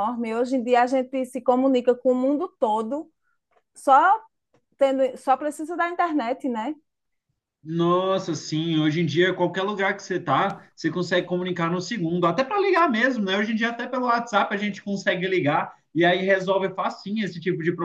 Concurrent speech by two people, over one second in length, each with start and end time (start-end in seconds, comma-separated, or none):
none